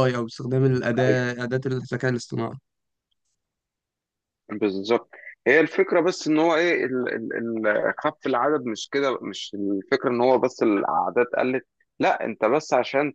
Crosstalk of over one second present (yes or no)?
no